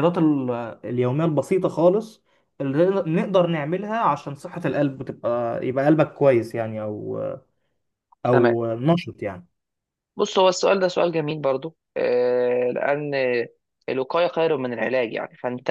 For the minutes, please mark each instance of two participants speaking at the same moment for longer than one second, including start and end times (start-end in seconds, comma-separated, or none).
none